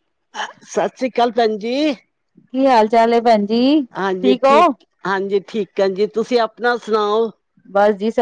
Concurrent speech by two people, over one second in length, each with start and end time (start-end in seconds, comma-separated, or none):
none